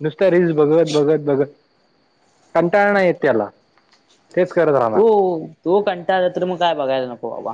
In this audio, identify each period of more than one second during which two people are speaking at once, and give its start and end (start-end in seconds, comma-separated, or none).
none